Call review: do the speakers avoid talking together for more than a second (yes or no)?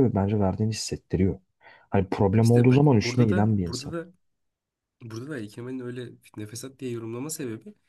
no